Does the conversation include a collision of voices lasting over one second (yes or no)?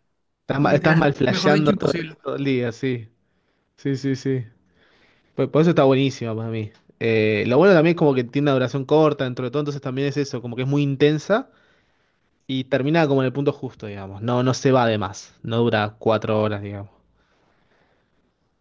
yes